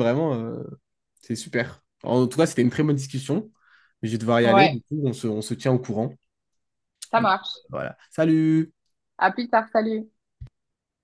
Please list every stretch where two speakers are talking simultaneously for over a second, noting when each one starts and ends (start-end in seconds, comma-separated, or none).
none